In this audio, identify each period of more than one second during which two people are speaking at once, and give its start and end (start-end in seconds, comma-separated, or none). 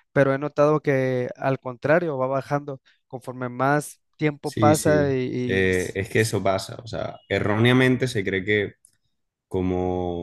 4.4-6.4